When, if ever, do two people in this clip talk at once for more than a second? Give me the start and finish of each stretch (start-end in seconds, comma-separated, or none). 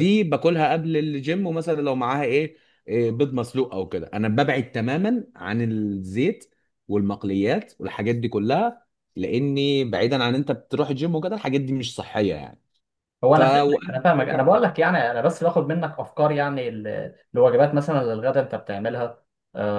13.3-14.7